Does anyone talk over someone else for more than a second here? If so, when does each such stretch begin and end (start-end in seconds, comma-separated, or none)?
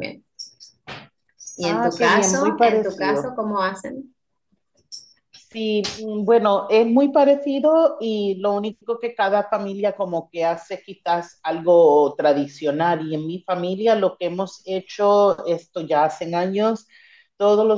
1.6-3.4